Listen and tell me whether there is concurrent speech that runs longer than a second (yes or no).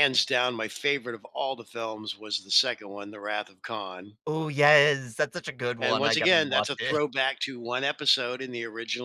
yes